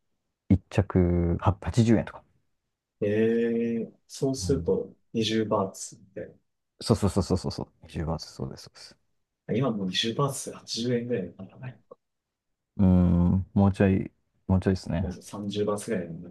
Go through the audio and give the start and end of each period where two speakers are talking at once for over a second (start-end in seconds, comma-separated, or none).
none